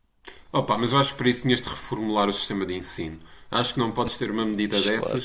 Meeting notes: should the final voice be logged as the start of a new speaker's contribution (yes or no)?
no